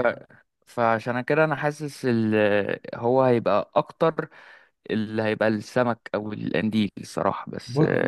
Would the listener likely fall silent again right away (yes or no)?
no